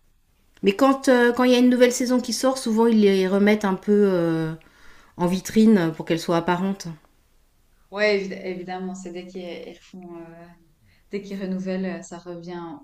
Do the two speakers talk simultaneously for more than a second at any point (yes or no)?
no